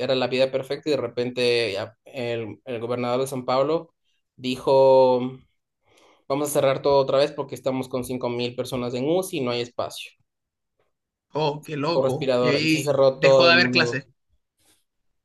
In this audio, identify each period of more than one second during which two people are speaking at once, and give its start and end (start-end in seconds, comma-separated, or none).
11.9-14.0